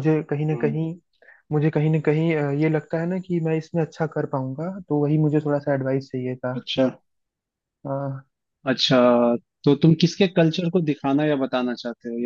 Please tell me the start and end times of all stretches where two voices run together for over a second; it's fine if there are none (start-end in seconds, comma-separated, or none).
none